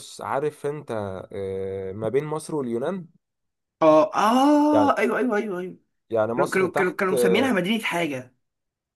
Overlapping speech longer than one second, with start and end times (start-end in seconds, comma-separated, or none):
6.4-7.6